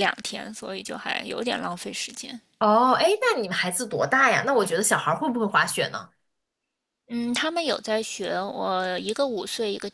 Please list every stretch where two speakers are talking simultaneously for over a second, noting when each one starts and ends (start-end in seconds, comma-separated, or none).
none